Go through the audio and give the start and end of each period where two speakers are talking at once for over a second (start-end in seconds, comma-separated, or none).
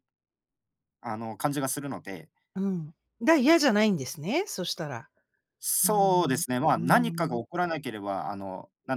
5.8-7.4